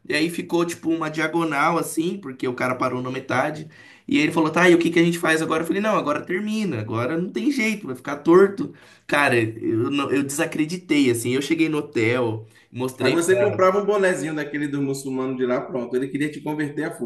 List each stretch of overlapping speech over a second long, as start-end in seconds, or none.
none